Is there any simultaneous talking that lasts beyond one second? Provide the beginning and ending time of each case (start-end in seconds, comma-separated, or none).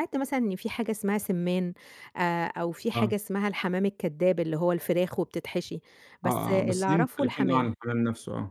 6.2-7.7